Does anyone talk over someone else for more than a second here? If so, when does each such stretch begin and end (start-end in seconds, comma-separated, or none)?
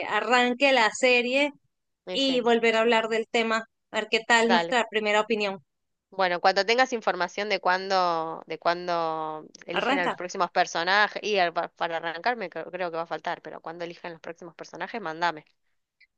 none